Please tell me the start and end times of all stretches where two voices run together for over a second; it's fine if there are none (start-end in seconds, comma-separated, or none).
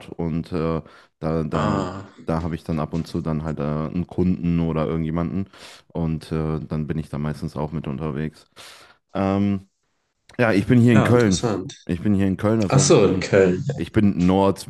none